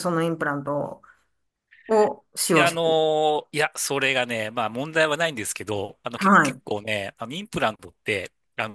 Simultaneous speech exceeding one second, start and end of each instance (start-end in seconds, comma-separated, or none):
none